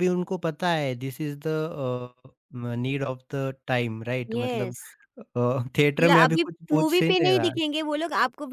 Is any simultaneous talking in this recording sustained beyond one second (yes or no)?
yes